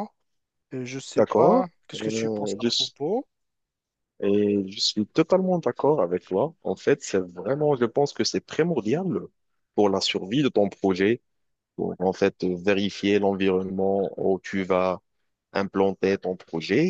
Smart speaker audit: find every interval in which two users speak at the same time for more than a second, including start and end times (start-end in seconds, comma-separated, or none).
1.1-2.9